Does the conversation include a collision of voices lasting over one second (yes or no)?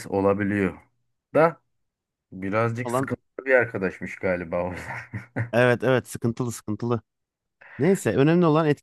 no